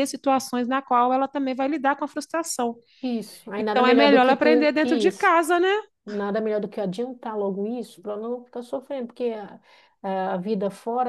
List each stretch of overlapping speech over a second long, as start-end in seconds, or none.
3.6-5.3